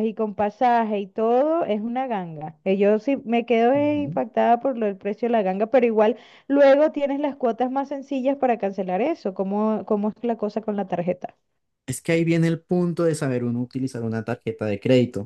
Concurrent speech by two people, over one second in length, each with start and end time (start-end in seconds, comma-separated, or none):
none